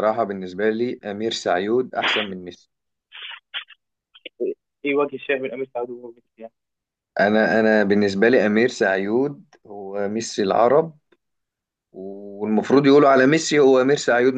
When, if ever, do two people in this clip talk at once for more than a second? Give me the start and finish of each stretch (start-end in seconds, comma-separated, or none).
none